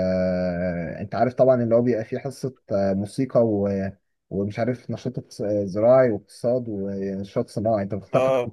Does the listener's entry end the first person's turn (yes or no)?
no